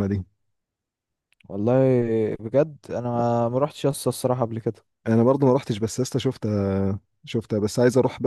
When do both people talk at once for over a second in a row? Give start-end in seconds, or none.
none